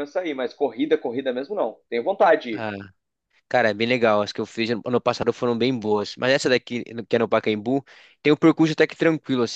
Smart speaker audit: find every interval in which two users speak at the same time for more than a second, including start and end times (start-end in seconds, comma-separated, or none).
none